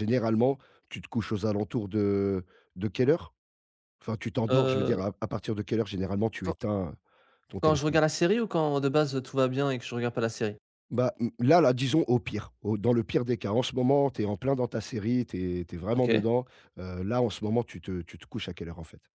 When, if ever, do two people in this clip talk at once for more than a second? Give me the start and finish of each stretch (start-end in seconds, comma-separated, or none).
none